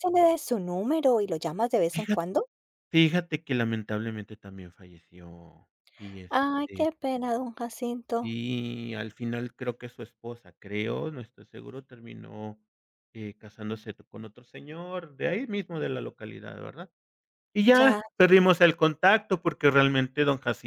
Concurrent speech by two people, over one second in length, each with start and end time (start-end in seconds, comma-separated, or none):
none